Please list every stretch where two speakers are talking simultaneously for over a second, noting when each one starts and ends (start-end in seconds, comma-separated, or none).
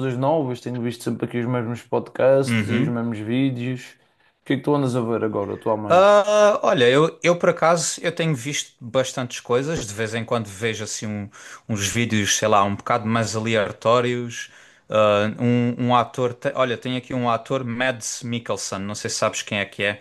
none